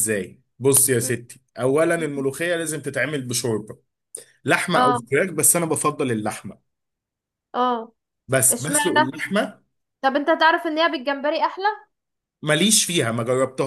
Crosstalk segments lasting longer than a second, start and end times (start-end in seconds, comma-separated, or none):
none